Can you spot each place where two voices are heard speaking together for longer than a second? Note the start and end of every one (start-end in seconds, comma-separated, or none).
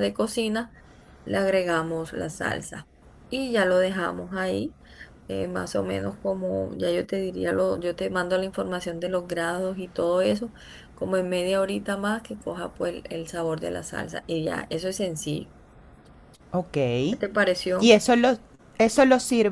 none